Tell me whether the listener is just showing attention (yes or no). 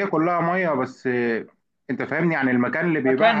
no